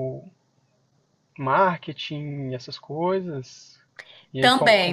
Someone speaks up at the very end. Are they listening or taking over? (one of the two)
taking over